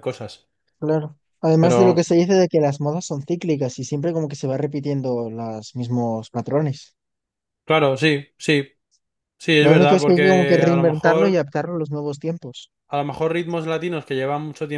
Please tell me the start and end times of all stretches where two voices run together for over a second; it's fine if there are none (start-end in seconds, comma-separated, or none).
9.6-11.4